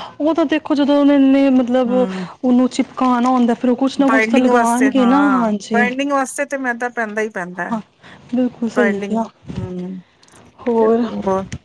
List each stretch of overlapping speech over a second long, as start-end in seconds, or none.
4.1-5.8